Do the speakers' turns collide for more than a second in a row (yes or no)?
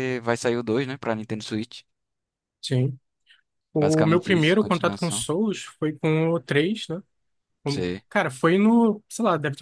yes